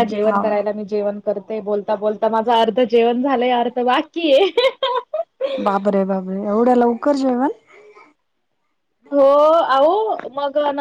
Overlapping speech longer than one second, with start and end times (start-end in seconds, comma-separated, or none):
none